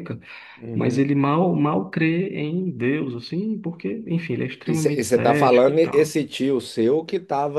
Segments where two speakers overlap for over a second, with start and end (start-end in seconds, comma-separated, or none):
4.6-6.2